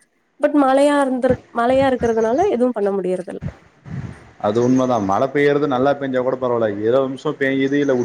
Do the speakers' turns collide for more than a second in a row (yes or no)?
no